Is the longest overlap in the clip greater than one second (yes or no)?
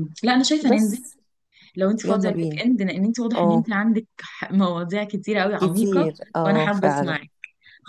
yes